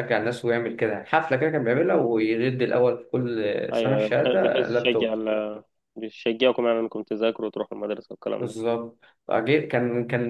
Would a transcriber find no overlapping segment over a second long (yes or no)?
no